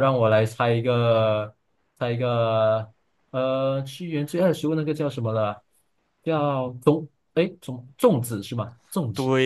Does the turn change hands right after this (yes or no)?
yes